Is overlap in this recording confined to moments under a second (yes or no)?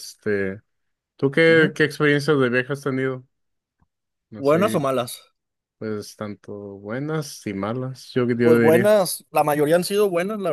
yes